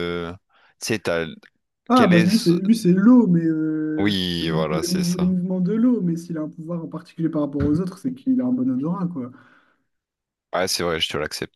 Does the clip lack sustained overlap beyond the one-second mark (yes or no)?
no